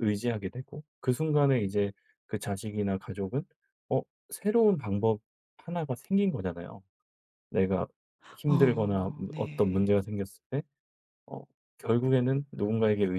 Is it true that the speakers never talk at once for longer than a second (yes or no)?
no